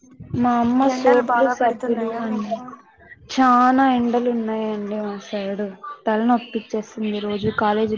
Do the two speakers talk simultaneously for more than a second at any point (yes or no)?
yes